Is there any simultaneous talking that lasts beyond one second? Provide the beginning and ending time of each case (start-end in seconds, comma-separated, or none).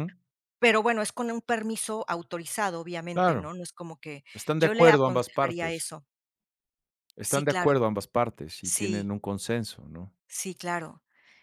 4.6-5.9